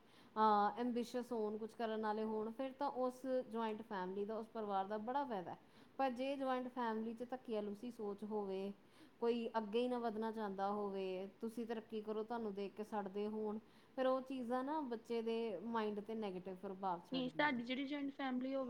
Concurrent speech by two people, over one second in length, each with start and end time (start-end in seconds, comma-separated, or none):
none